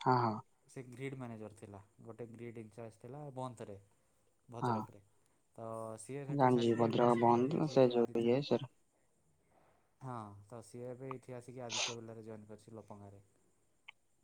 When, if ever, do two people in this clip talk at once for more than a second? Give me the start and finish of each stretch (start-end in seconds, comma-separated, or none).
6.4-8.4